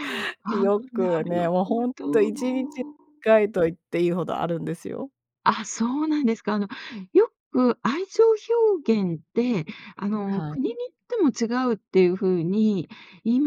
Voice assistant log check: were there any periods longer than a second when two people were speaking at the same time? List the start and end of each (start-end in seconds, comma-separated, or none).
0.6-2.3